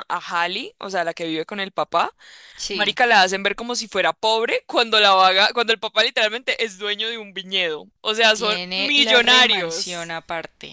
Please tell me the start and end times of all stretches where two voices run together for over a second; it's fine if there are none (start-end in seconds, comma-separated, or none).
8.3-10.1